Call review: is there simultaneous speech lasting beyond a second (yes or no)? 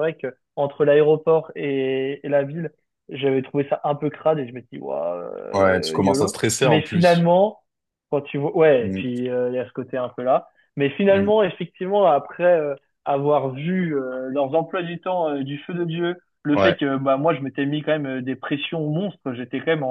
yes